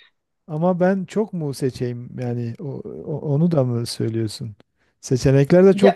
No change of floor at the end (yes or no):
yes